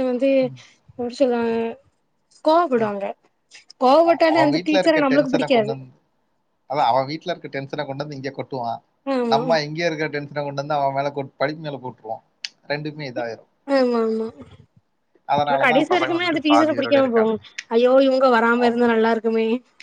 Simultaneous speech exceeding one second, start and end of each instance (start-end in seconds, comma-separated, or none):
15.7-17.4